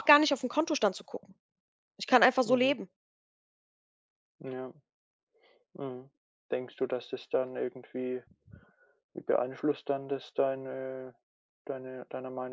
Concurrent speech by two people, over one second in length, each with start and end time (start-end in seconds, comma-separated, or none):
none